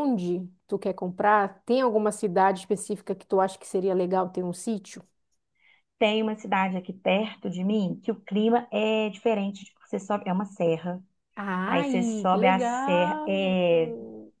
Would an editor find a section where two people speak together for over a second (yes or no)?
yes